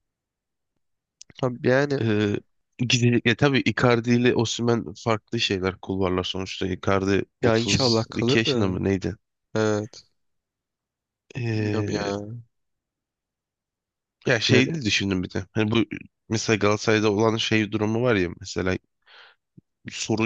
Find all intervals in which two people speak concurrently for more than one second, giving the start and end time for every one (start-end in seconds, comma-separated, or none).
7.4-8.8